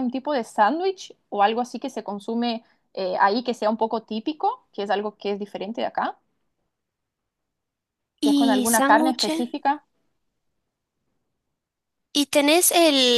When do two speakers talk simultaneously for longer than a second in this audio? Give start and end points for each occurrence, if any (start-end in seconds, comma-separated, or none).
8.2-9.5